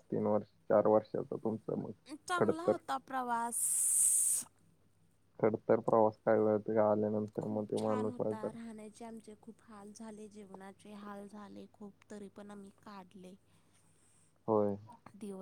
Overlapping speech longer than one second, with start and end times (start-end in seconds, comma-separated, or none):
none